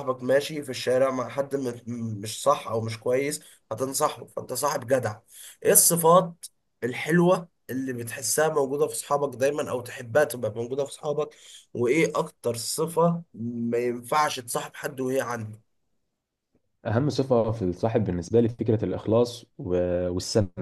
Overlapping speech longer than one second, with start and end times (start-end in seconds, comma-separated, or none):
none